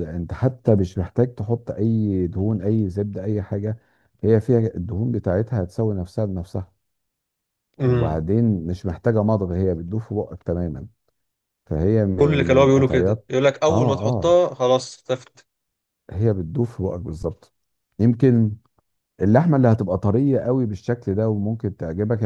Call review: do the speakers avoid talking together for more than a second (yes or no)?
no